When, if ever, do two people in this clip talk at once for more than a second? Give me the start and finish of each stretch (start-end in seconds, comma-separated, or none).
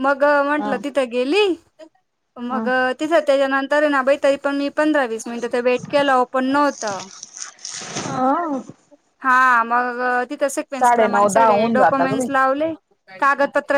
10.8-12.3